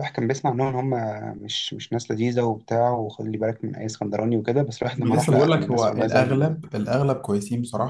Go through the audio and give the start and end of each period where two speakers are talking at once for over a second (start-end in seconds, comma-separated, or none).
5.0-6.5